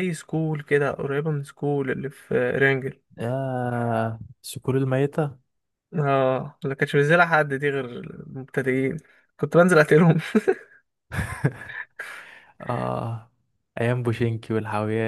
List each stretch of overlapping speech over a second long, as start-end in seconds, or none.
none